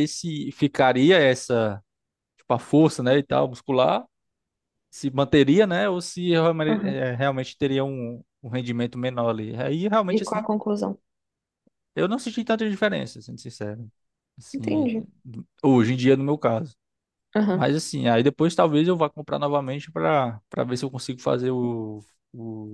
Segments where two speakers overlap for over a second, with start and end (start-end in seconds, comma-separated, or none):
none